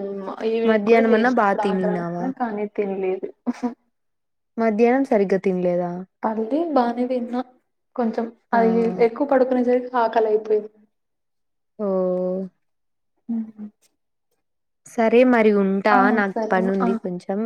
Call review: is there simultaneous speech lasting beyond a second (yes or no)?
yes